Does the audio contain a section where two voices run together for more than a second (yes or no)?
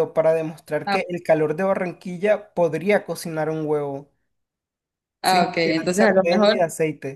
yes